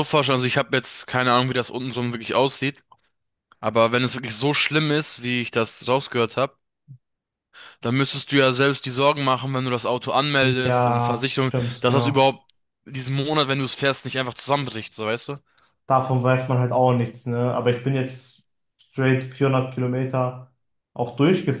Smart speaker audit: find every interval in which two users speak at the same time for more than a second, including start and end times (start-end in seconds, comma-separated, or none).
10.4-12.3